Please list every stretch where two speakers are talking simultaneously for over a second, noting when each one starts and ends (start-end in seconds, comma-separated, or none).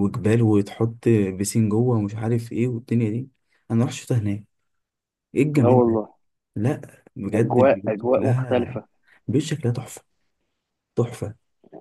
7.3-8.8